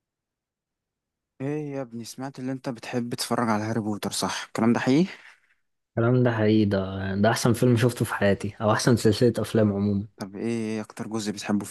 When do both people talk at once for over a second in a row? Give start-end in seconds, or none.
none